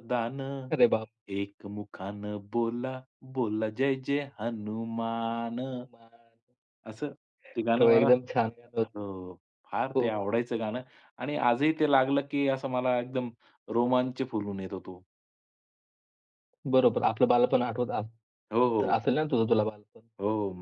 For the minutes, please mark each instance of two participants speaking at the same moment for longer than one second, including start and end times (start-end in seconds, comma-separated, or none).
none